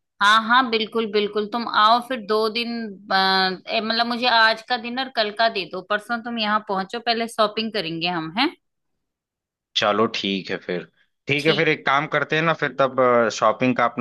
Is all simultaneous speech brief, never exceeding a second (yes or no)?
yes